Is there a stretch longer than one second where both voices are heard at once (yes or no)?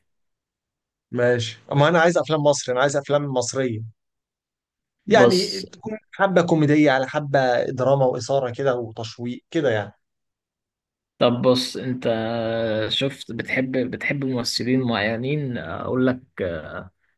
no